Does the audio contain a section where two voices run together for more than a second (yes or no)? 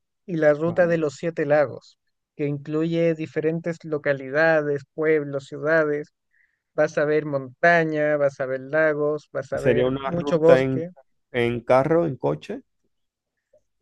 yes